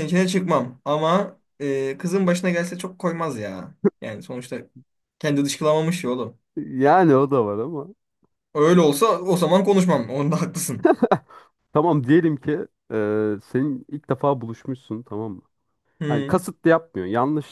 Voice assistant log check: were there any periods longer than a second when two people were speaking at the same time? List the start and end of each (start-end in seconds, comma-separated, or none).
none